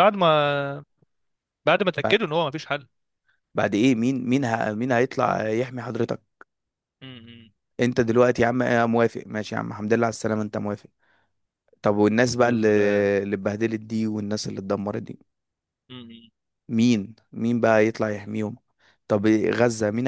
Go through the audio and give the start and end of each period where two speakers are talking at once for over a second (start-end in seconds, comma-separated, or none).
none